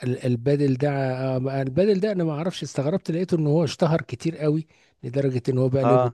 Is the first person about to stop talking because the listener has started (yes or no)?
no